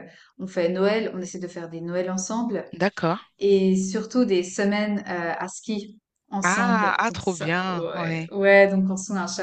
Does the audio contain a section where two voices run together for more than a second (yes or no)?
yes